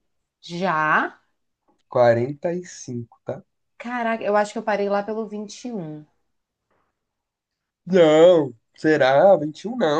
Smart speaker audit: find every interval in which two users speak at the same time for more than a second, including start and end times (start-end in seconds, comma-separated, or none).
none